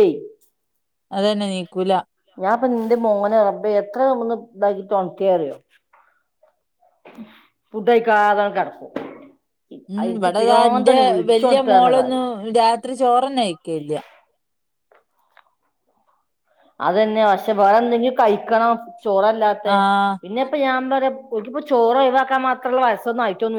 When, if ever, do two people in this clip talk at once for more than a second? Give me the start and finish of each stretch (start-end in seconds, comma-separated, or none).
10.1-12.2